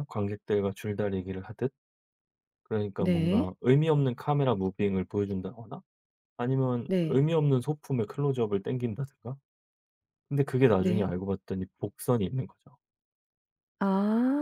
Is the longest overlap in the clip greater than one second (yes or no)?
no